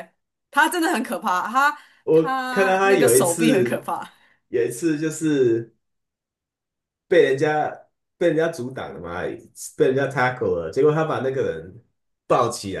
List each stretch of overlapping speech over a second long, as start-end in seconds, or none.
2.0-3.9